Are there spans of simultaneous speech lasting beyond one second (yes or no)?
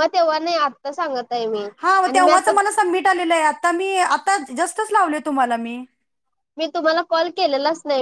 no